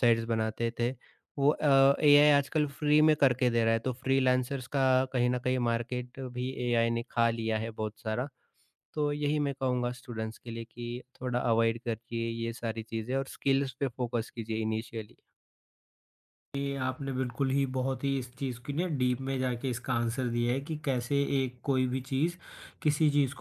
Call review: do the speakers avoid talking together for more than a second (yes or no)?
yes